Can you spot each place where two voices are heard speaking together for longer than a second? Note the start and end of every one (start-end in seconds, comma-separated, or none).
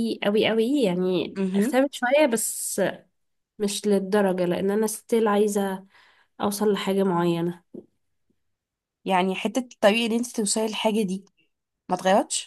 none